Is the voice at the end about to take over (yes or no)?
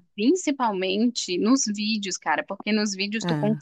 no